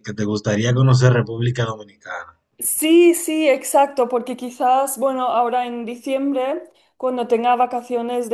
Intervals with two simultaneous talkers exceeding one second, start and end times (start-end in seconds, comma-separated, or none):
none